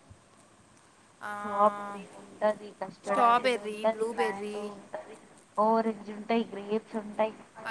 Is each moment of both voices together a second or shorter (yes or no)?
no